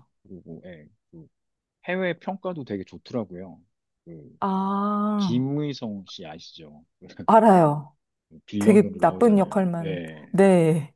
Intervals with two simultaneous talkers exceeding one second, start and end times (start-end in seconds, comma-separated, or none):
8.6-10.3